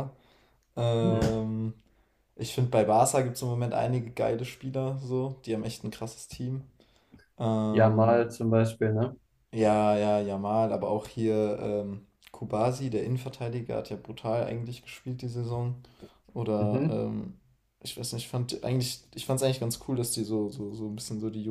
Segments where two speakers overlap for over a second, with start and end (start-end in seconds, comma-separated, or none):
none